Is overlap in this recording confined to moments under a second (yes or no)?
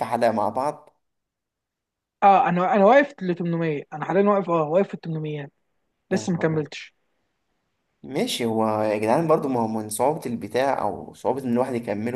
yes